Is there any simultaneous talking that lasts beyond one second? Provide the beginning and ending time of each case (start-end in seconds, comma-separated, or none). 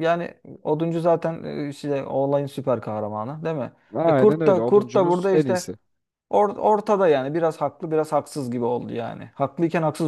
3.9-5.6